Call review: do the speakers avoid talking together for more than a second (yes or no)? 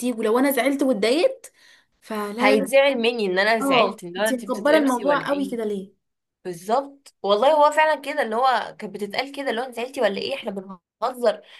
no